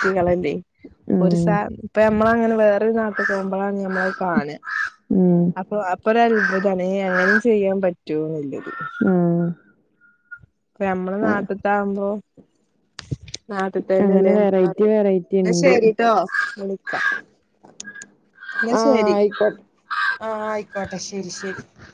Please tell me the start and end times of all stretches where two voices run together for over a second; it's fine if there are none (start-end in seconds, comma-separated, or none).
14.1-15.7